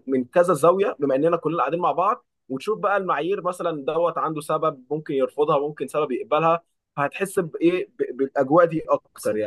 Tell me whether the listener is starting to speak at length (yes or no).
yes